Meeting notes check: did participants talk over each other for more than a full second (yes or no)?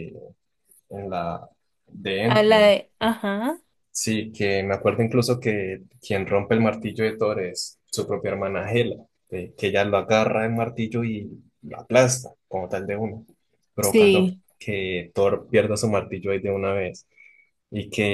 no